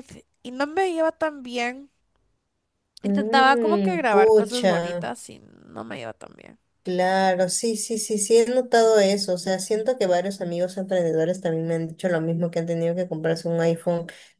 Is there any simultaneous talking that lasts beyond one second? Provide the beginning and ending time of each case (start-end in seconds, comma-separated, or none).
3.1-5.1